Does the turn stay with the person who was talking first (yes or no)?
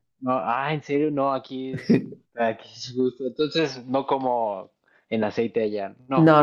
no